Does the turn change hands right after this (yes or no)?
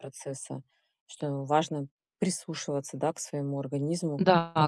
yes